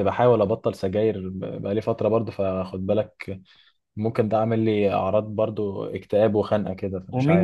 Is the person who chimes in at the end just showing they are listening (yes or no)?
no